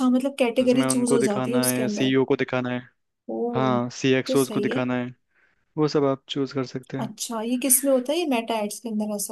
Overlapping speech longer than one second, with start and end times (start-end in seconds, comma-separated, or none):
0.8-2.1